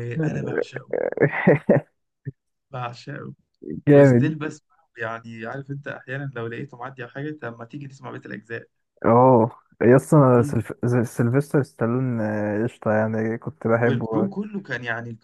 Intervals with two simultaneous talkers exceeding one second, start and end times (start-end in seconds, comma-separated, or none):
none